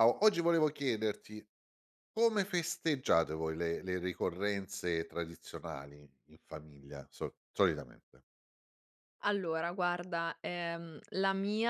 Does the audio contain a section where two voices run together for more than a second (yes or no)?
no